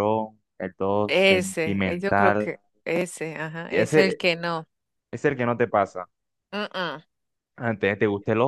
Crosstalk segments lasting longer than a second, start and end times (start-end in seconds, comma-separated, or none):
1.1-2.5